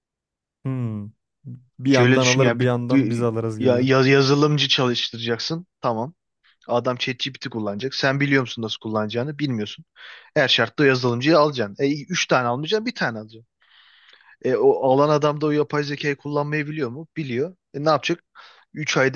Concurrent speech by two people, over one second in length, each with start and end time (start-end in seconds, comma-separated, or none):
1.9-3.9